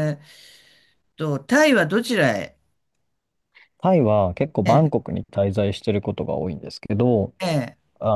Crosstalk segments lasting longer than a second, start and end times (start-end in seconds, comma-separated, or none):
none